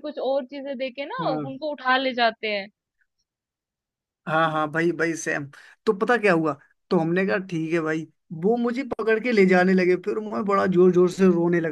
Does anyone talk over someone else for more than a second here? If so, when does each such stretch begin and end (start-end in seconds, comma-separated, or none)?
none